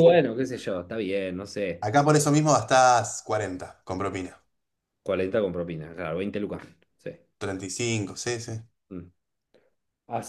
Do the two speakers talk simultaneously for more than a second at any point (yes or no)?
no